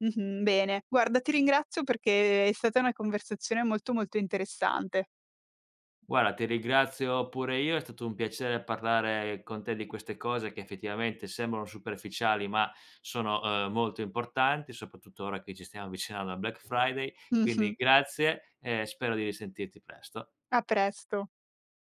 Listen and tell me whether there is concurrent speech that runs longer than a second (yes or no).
no